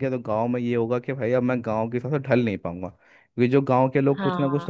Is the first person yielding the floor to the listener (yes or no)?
no